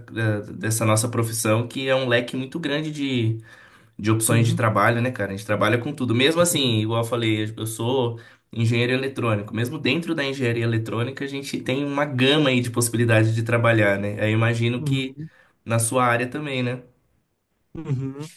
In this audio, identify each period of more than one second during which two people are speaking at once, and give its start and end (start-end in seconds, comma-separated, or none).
none